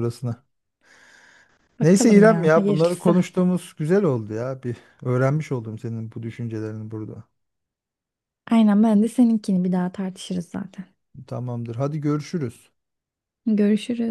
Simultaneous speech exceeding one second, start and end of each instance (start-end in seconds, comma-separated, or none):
1.8-3.2